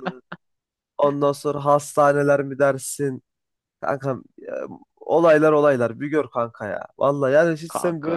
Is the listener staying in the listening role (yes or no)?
yes